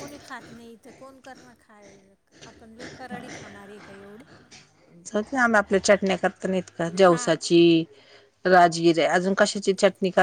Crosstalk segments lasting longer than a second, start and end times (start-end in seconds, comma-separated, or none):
none